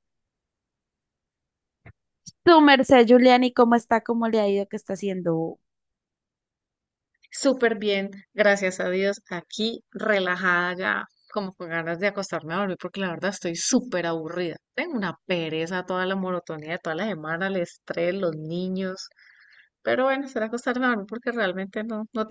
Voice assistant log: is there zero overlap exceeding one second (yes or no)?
yes